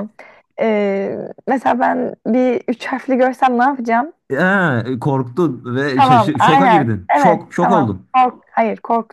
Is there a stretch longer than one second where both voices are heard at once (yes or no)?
yes